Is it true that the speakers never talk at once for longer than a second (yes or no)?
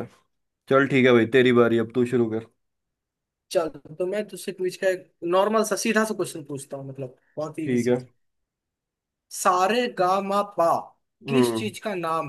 yes